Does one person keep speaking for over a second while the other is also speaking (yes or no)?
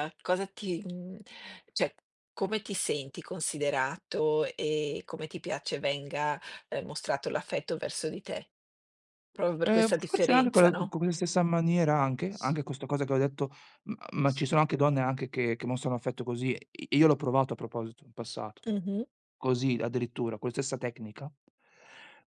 yes